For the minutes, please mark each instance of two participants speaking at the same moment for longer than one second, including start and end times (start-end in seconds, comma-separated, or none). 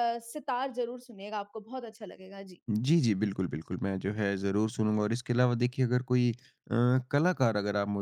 none